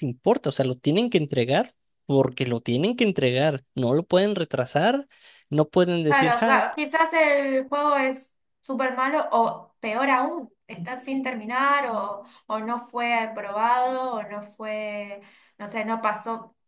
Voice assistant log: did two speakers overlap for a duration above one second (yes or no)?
no